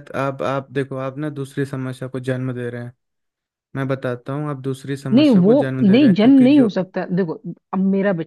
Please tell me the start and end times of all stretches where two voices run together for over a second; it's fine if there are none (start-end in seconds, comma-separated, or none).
5.1-6.8